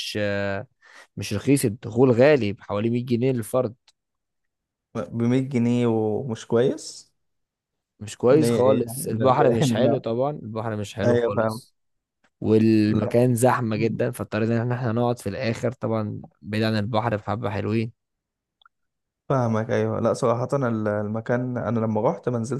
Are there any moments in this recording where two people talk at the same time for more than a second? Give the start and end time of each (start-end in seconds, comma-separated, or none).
8.3-10.0